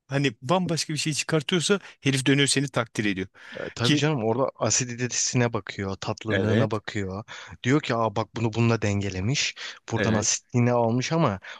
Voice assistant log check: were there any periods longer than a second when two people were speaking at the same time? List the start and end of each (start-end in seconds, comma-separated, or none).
none